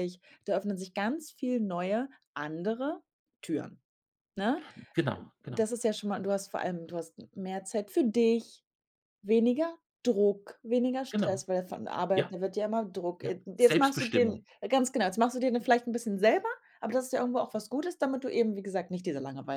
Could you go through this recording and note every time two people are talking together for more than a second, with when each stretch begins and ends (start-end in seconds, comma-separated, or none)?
13.2-14.4